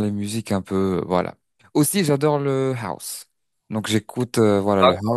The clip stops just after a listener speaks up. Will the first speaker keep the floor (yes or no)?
yes